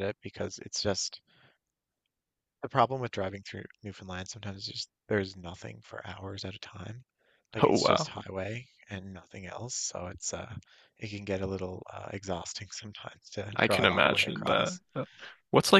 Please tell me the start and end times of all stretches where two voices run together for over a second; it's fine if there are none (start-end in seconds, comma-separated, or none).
13.6-14.8